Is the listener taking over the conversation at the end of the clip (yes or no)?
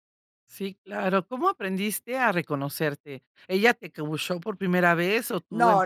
yes